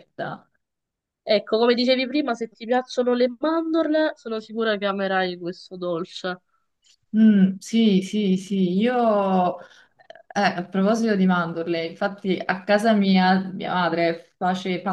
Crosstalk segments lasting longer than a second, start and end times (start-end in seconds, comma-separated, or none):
none